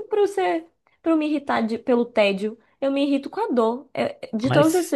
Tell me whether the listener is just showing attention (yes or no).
yes